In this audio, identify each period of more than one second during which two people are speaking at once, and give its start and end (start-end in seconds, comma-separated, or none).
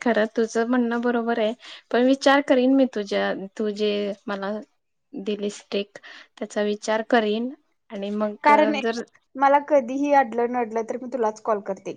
none